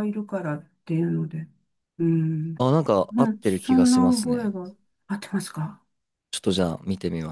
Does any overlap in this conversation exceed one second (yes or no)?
yes